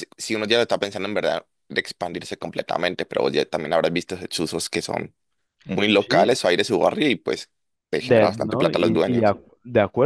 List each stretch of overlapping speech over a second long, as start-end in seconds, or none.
8.0-9.3